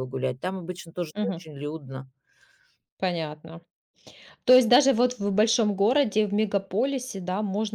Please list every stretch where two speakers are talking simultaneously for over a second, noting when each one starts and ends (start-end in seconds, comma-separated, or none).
none